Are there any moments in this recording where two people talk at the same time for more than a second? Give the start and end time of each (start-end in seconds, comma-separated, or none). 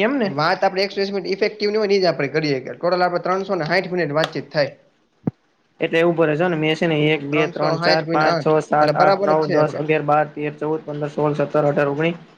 7.3-9.8